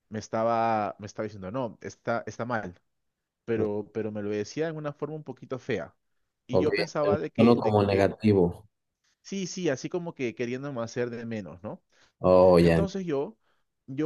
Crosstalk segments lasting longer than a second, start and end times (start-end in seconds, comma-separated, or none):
6.5-8.1